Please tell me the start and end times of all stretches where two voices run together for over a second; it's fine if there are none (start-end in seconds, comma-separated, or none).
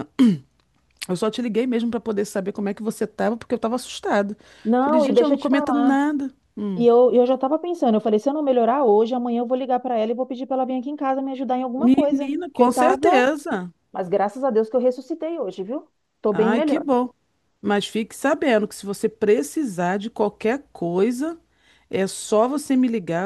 4.8-6.0, 11.8-13.1